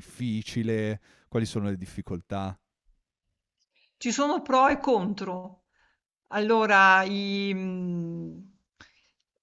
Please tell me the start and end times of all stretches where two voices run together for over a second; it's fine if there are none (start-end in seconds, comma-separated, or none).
none